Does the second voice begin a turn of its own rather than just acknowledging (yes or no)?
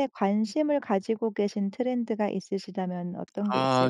yes